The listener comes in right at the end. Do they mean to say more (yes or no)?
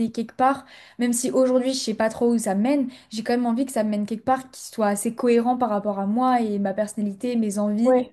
no